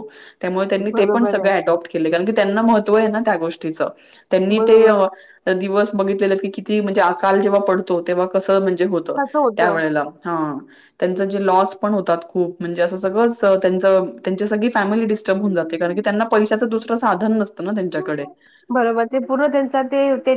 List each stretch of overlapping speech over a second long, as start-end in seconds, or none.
none